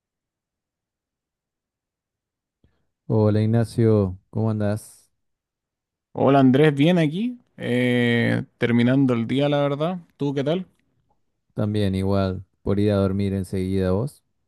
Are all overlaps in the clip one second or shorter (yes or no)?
yes